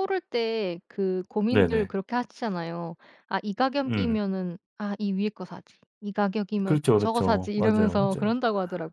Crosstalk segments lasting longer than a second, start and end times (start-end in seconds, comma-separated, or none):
6.7-8.4